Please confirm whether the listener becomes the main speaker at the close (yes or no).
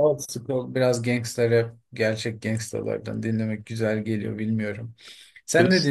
yes